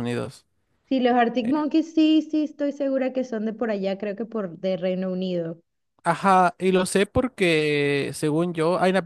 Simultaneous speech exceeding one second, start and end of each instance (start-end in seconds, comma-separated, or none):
none